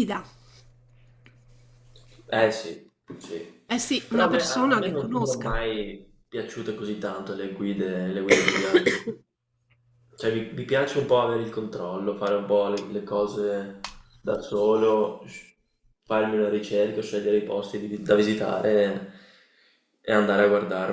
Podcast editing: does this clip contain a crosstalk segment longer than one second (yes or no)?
yes